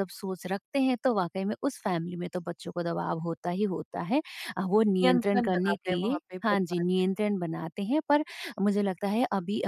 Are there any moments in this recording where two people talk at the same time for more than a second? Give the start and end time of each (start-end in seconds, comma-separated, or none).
5.0-7.2